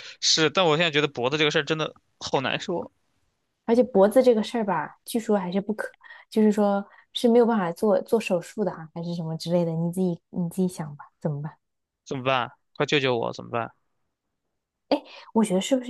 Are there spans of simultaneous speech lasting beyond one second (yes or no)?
no